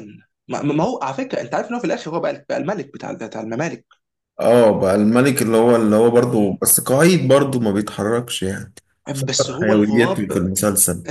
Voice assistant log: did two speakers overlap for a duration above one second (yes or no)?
yes